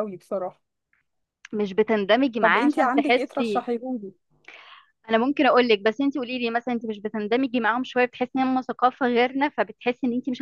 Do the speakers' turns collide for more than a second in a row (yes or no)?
yes